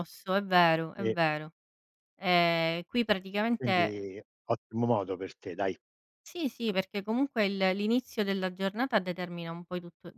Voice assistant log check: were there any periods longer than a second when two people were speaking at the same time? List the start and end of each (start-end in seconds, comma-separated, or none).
none